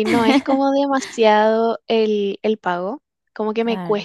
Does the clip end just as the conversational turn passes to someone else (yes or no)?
no